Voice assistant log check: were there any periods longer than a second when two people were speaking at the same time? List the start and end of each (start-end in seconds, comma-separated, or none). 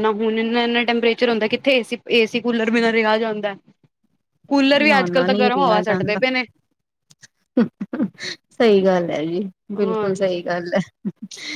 4.8-6.2